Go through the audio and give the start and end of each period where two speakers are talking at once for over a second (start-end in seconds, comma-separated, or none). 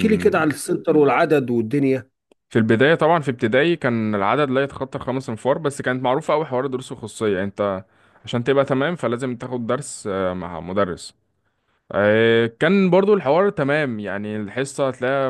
none